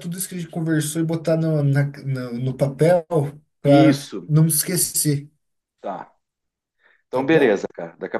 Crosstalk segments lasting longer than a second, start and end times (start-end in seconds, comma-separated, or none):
none